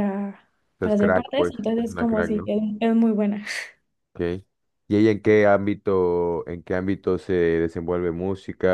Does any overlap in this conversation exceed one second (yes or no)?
yes